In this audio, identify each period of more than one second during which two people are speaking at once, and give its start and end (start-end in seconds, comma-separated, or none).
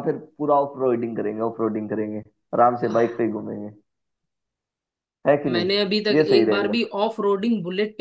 5.5-6.8